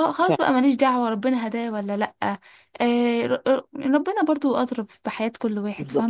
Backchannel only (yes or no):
no